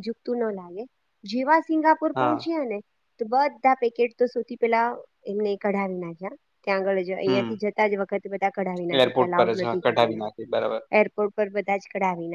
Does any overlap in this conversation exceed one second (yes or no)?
yes